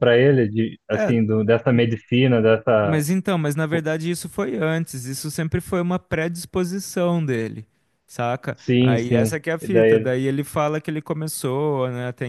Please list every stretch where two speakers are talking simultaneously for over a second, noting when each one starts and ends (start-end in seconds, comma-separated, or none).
8.5-10.1